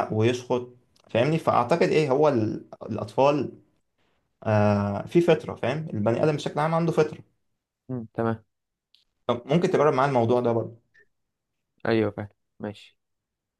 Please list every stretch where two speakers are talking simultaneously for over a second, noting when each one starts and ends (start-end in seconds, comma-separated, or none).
none